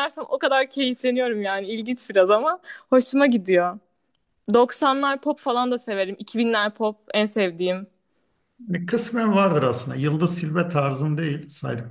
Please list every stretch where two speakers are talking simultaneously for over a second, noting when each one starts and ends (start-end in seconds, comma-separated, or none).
none